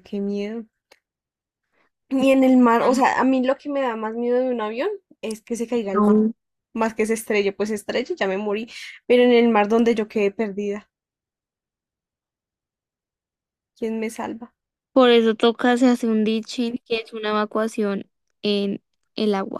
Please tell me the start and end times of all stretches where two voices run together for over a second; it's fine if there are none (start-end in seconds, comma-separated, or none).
none